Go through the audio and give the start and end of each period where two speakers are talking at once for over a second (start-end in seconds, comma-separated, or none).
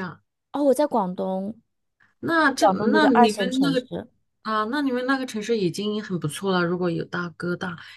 2.6-3.9